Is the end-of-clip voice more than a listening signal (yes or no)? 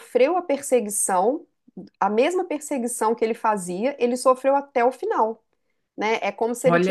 no